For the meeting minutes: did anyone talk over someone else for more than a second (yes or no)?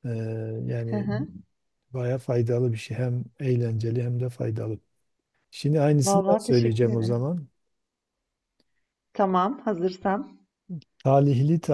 yes